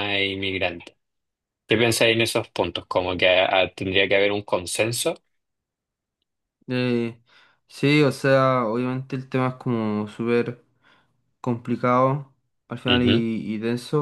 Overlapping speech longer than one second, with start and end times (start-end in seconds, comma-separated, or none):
none